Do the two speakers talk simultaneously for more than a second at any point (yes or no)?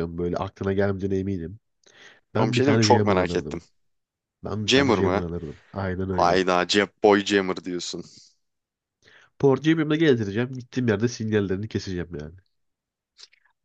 yes